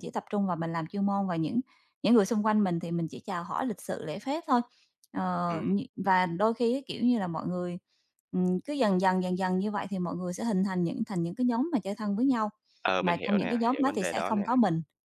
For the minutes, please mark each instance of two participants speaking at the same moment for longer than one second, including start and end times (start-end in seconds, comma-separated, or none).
13.0-14.4